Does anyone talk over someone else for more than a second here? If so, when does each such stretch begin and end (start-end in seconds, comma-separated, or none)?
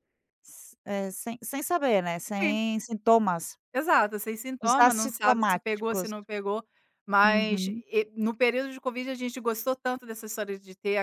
4.6-6.1